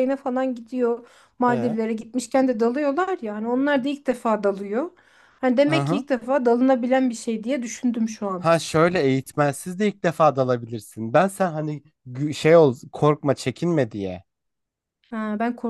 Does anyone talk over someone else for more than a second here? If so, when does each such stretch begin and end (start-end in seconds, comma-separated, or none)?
none